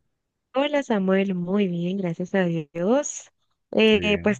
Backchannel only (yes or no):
yes